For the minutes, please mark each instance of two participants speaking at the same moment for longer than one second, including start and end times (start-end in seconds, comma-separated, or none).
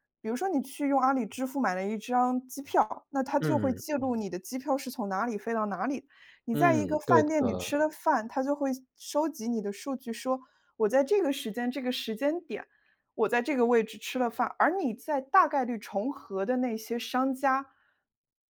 6.5-7.7